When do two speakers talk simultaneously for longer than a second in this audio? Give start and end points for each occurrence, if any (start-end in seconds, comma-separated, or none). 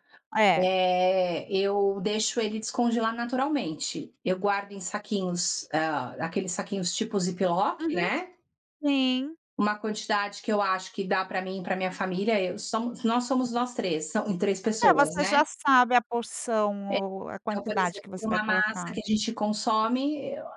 17.4-18.9